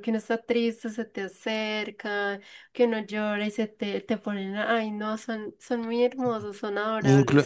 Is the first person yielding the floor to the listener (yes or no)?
yes